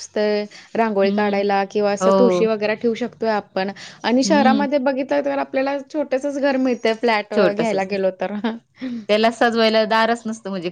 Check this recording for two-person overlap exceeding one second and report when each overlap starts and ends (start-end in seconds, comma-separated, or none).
none